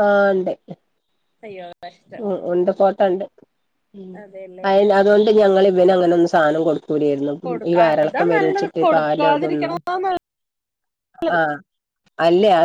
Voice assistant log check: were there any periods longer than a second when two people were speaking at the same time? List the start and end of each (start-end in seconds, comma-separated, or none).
7.7-9.7